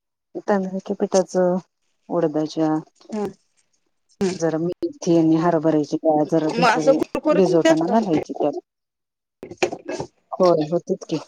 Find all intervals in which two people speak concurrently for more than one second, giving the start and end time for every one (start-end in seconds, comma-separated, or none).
6.5-7.9